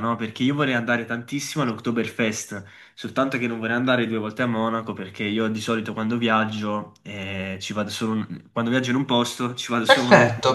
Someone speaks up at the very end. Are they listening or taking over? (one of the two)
taking over